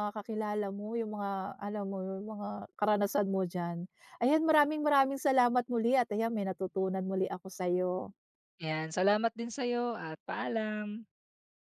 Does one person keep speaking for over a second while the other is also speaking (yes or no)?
no